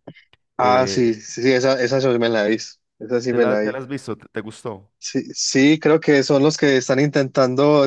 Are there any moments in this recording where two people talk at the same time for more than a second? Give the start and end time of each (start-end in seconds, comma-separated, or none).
none